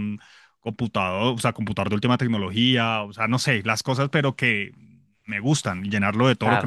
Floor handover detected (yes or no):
no